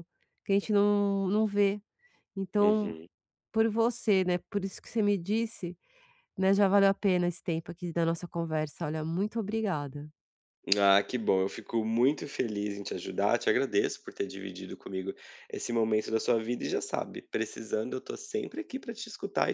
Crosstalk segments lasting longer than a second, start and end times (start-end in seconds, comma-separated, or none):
none